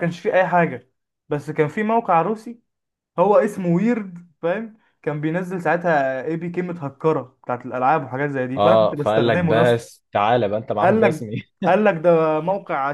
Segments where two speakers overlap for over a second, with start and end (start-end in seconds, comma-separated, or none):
8.6-9.8